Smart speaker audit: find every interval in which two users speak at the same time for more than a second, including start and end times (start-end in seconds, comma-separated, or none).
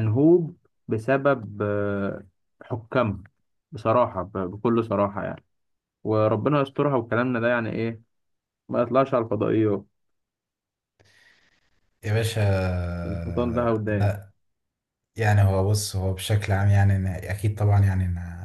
none